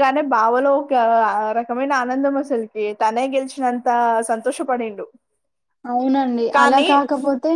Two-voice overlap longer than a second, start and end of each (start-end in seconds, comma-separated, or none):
none